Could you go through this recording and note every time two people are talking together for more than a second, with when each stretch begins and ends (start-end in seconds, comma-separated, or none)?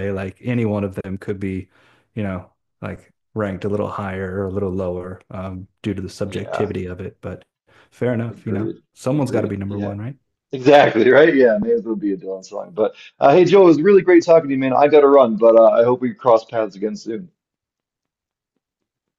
8.3-9.9